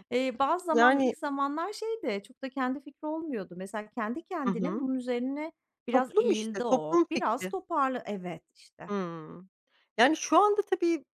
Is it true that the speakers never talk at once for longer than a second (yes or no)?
no